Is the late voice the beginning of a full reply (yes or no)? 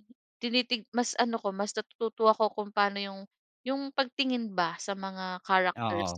no